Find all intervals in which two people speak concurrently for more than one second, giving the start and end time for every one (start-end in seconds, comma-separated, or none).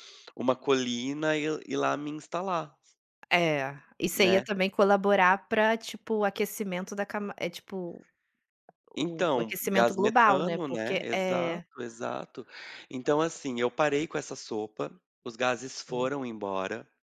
9.0-11.6